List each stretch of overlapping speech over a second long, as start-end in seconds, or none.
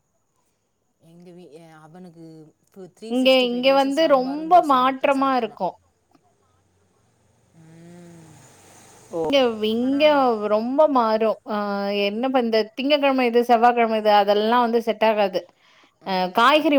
3.1-5.6